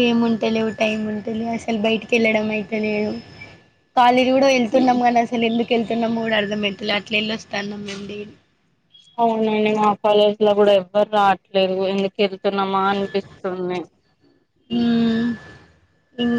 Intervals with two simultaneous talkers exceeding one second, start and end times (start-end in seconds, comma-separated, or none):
none